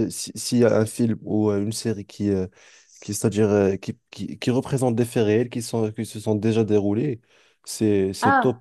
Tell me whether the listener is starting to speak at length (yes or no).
no